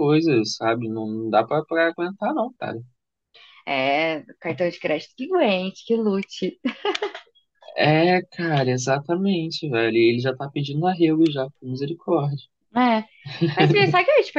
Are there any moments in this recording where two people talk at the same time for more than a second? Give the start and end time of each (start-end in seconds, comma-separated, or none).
none